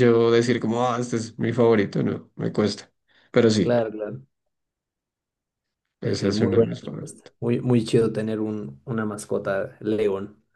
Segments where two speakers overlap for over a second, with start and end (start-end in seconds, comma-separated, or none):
6.0-7.3